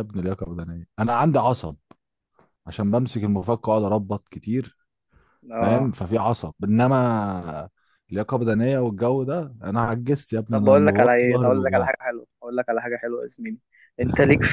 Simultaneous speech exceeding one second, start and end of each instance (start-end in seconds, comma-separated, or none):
10.5-11.9